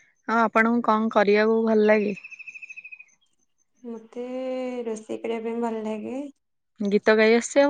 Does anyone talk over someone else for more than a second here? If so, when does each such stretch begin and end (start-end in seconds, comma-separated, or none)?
none